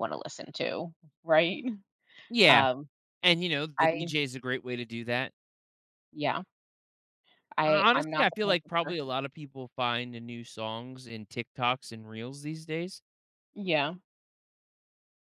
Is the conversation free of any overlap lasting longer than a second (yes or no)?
no